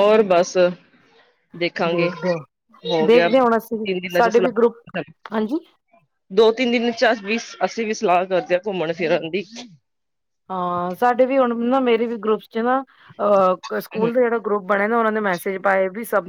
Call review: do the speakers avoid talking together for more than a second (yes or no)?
no